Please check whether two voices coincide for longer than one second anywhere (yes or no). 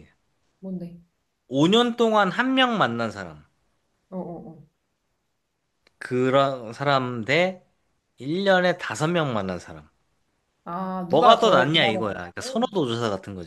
yes